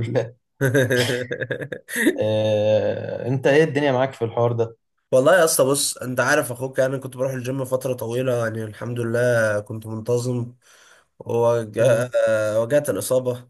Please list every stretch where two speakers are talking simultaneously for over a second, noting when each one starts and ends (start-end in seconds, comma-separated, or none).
none